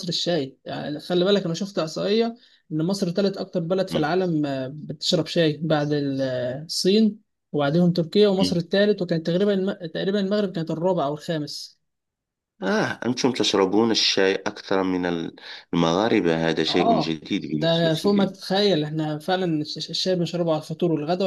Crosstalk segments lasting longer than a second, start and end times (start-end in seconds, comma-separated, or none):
16.7-18.4